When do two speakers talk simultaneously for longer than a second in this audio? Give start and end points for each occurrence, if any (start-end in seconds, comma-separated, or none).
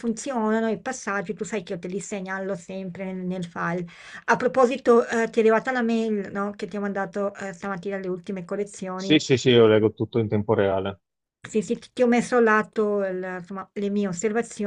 none